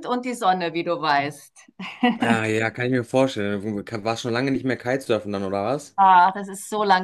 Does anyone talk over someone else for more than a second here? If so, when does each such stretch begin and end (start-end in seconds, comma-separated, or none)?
none